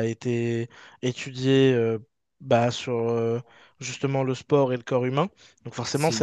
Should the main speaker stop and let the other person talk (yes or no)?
no